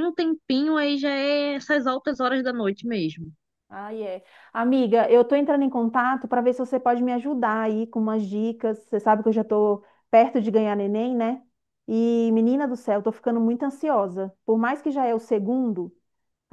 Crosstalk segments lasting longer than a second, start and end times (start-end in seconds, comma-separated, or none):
none